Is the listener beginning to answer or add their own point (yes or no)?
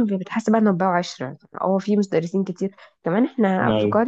no